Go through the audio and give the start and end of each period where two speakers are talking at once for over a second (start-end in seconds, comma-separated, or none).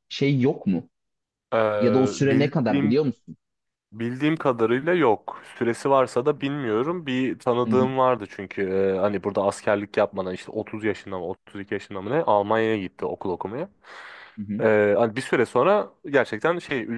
1.8-3.1